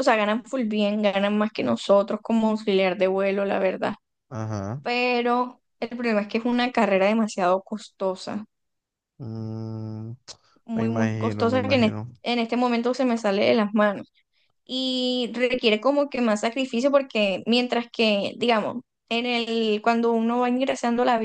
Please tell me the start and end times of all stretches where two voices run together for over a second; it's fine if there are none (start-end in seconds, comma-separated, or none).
10.7-12.2